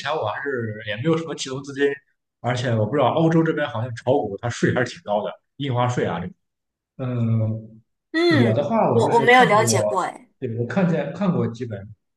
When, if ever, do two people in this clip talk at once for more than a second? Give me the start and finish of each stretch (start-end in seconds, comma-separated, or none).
8.3-9.8